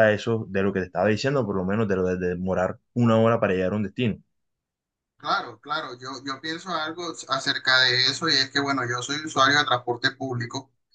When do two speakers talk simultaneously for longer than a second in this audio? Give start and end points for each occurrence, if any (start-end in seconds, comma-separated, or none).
none